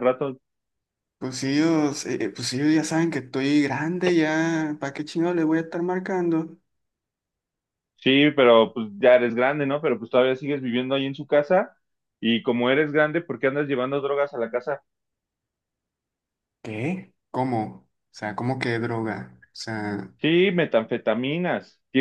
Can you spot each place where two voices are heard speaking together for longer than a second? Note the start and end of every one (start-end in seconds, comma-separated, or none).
none